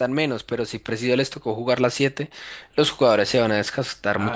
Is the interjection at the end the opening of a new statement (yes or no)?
yes